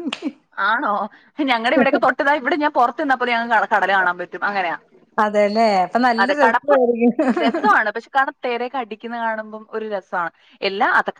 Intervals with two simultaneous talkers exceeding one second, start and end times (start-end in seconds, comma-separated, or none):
none